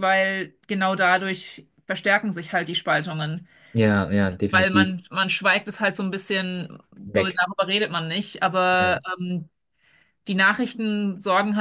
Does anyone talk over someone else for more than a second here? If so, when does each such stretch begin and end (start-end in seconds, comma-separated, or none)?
none